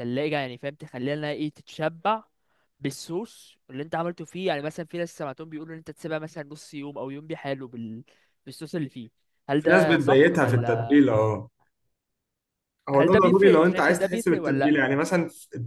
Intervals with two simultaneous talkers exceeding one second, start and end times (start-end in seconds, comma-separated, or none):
9.6-11.0, 12.9-14.8